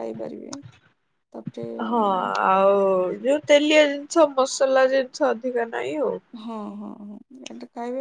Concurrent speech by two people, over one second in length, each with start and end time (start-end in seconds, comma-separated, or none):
none